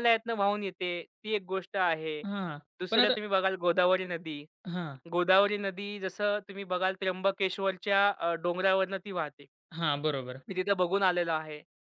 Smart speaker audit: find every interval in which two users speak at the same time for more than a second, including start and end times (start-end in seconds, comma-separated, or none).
none